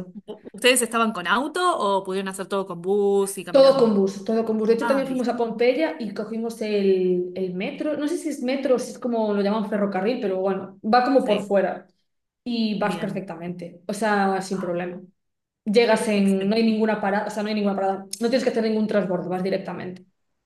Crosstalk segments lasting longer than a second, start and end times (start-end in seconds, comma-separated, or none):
none